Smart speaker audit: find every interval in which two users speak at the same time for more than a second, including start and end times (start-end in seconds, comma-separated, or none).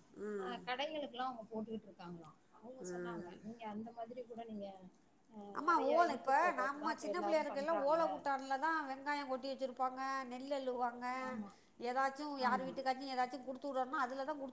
5.7-8.0